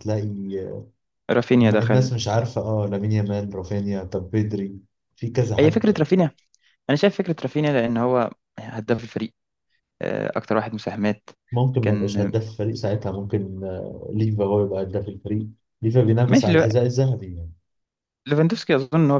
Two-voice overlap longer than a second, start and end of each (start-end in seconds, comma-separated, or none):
none